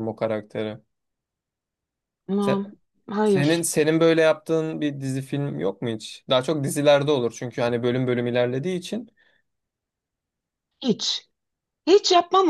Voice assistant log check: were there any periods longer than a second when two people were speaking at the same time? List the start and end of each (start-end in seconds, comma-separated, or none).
none